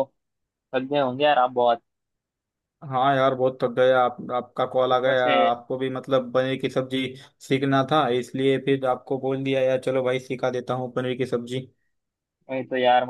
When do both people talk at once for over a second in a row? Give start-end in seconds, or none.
none